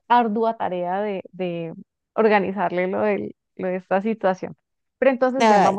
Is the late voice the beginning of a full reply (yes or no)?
no